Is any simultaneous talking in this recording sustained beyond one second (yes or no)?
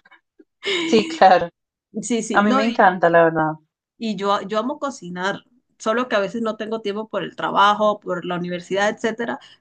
no